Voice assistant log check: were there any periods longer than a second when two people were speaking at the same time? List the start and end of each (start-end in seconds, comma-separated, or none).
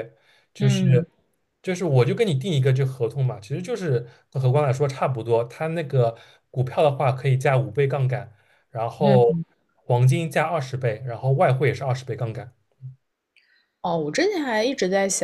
none